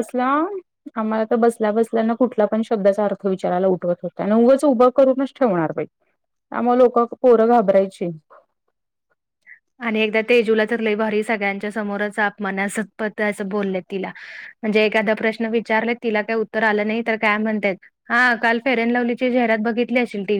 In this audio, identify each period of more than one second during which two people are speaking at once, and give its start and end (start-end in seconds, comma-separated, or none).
none